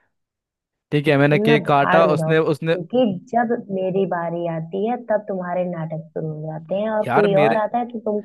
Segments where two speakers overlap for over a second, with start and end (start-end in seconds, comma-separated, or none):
1.3-2.8